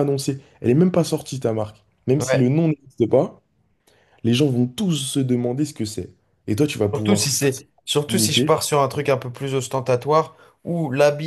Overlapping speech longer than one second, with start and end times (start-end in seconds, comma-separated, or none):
6.9-8.5